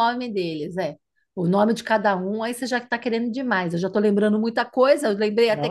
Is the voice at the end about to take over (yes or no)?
yes